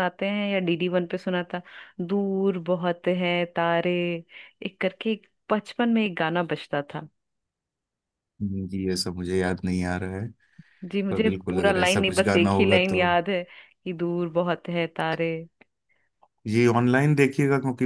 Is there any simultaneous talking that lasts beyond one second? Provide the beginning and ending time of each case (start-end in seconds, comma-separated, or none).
11.1-13.0